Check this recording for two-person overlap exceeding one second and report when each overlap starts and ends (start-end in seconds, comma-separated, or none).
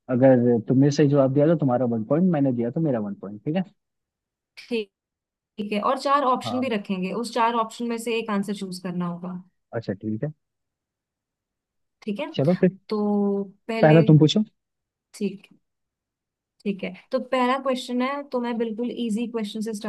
none